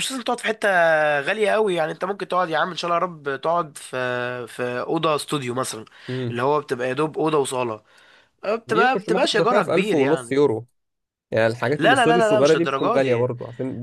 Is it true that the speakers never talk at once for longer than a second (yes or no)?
no